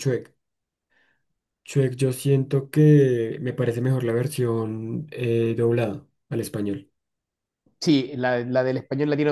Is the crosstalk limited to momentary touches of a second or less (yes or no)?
yes